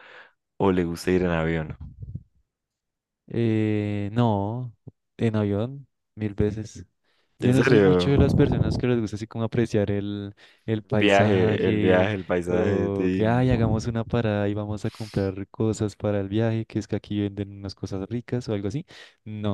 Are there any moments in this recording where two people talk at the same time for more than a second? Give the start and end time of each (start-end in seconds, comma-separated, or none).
11.0-13.5